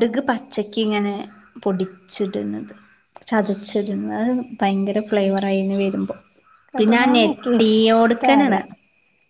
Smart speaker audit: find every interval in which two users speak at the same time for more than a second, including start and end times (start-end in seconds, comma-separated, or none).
6.8-8.6